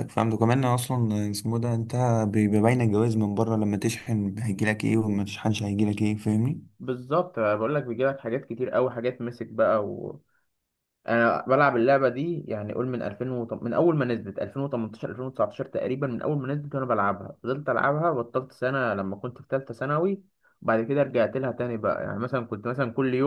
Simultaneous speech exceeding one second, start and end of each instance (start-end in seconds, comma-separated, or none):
none